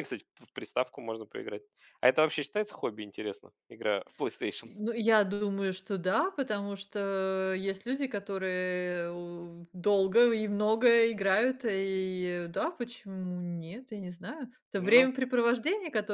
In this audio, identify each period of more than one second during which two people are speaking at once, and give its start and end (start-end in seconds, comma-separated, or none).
none